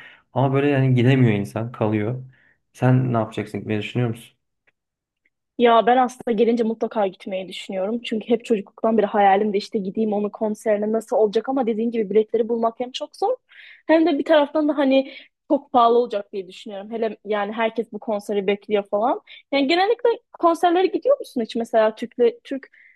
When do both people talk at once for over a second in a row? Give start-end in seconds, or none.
none